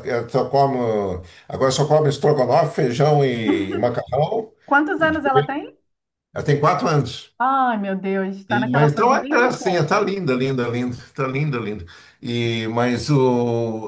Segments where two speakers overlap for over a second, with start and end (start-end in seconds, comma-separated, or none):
8.5-10.0